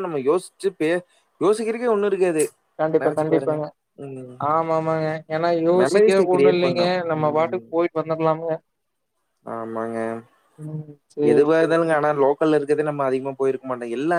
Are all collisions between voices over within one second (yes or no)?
no